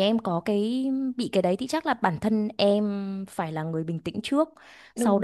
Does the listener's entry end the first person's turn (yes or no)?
no